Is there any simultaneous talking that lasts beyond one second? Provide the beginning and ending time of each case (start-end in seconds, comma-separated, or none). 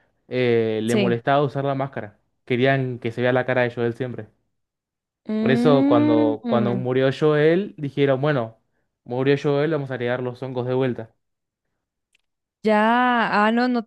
5.4-6.9